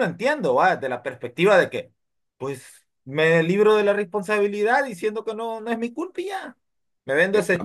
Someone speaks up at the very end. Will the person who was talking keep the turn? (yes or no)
yes